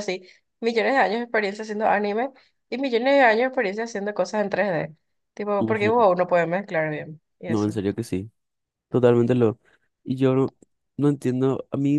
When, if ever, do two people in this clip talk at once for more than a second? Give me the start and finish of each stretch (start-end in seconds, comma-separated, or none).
none